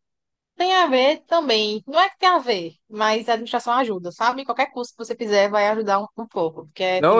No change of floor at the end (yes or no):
no